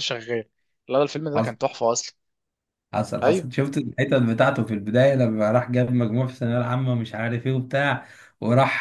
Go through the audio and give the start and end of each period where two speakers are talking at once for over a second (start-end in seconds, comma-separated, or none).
none